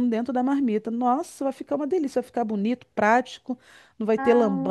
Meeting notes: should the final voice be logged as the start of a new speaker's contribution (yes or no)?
no